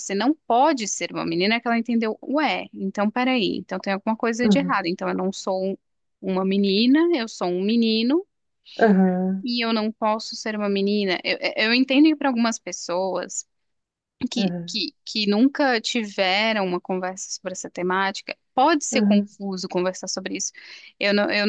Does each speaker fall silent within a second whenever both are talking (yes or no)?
yes